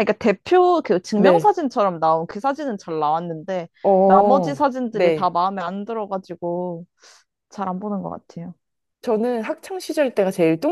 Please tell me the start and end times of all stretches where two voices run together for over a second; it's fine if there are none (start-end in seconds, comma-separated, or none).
4.0-5.3